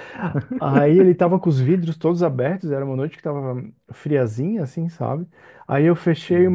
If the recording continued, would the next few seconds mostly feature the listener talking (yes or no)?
no